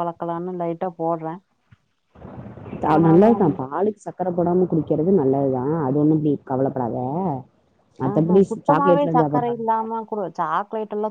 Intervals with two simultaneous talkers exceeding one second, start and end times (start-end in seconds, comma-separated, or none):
8.1-9.7